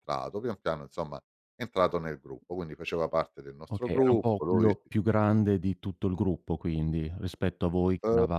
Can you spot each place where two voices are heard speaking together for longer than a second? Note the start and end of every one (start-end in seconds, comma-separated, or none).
3.7-4.9